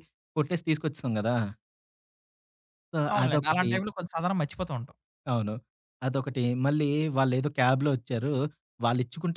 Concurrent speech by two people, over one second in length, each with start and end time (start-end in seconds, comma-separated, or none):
none